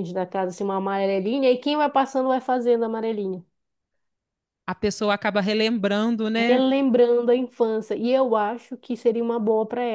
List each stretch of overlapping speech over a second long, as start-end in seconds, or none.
none